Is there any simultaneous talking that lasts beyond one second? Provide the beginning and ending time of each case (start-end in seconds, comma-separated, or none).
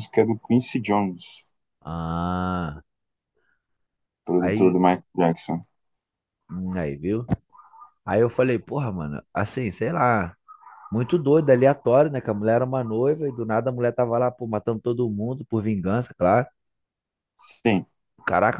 none